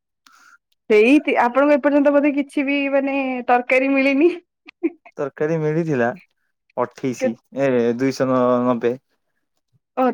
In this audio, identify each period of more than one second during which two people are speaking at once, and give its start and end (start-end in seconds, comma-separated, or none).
none